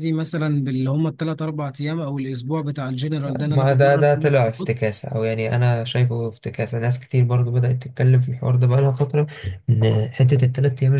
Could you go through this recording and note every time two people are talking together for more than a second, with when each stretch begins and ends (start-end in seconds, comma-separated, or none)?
3.4-4.7